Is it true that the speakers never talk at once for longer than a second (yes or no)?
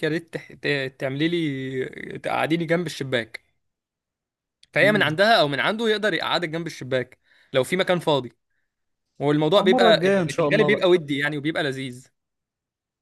no